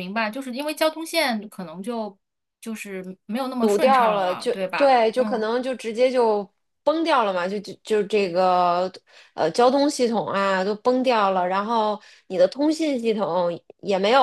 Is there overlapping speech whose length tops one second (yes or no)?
yes